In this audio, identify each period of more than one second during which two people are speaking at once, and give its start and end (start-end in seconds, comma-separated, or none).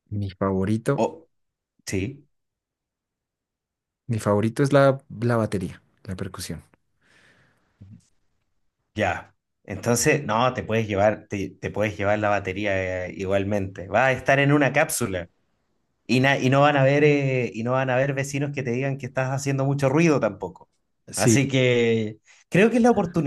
none